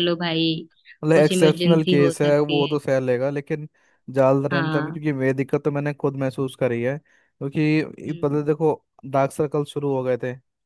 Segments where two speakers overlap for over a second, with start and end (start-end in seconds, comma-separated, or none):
1.1-2.8